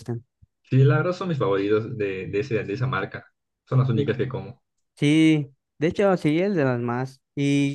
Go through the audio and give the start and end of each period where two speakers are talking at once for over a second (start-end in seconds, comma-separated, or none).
none